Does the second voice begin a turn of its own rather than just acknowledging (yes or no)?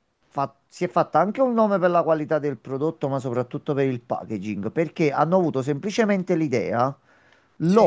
no